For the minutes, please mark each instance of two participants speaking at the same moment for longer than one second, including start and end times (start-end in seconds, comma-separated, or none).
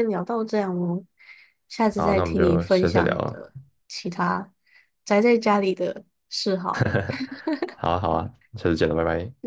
1.9-3.5